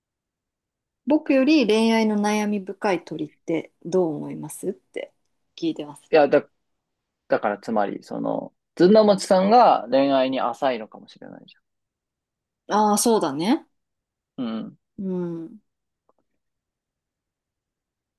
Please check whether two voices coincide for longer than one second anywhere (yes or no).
no